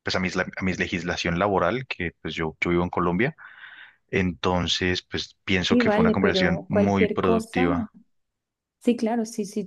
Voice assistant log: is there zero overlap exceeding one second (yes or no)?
no